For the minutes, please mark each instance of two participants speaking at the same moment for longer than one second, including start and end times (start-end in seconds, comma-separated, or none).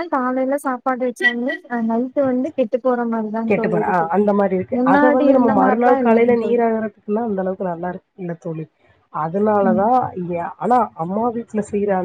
4.8-6.6